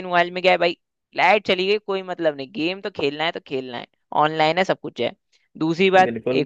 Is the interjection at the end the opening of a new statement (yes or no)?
no